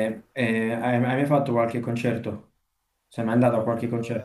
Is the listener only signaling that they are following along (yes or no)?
no